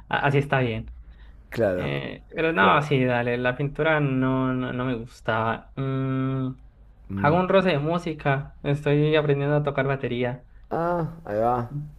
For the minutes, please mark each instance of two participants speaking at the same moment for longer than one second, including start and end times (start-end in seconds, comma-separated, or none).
none